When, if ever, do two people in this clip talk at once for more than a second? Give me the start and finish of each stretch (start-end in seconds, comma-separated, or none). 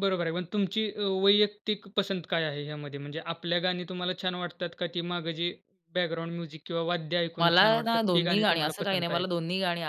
7.4-9.2